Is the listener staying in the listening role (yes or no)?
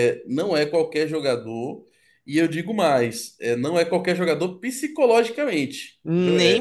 no